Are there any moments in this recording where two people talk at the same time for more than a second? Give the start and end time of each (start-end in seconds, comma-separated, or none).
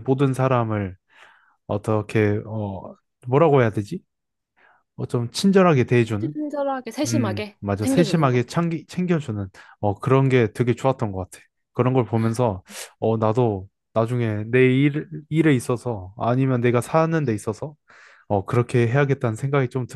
7.1-8.5